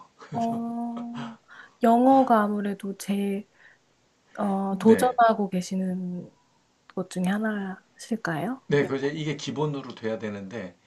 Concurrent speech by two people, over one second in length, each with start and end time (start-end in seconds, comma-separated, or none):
none